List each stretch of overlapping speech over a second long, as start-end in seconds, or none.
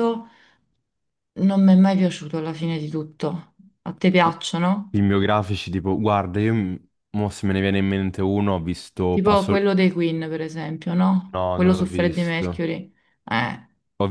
11.3-12.6